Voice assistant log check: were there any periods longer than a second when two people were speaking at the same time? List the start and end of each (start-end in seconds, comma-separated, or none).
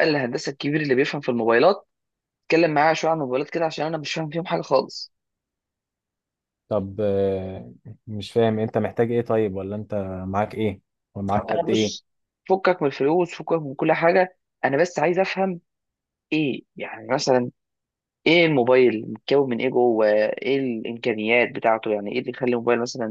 none